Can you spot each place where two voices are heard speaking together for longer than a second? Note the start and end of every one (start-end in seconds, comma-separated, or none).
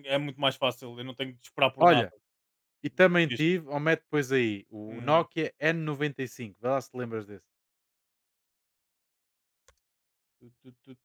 none